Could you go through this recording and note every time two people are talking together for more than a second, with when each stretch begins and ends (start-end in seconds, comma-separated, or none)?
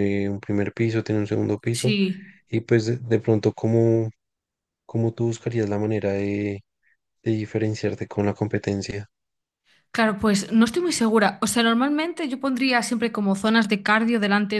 none